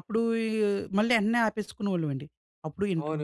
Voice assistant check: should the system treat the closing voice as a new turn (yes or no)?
yes